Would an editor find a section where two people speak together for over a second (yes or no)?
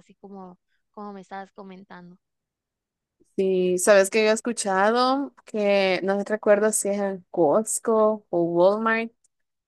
no